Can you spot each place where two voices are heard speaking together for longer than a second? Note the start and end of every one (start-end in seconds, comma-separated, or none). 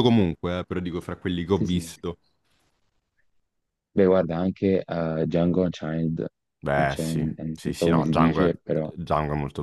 6.8-8.5